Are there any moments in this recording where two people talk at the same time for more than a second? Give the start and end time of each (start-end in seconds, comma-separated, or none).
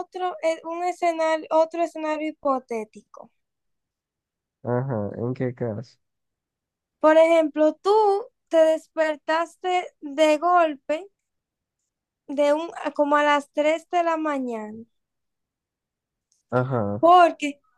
none